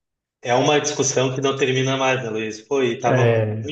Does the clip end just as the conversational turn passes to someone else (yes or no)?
no